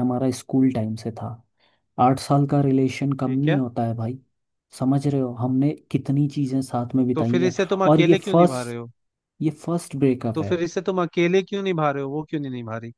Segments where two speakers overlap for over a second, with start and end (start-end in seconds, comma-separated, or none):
7.2-8.8